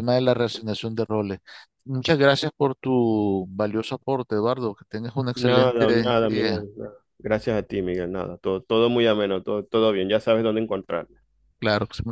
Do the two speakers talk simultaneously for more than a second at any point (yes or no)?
yes